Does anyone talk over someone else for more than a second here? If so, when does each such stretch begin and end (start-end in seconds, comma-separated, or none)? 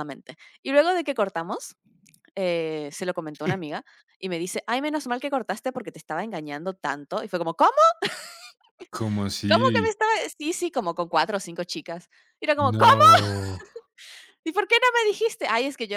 none